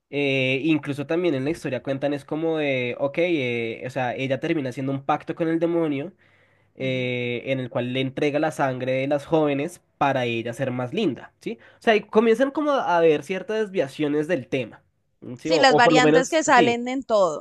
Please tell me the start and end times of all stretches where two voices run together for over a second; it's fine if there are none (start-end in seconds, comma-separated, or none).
15.5-16.8